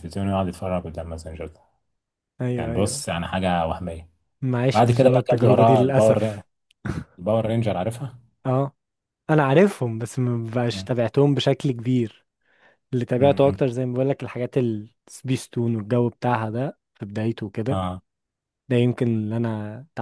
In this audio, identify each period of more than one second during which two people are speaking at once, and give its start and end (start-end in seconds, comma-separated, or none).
4.7-6.4